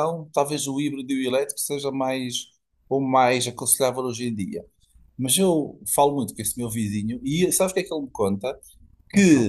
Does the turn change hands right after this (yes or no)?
no